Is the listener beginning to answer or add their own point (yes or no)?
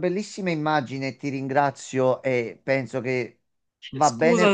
no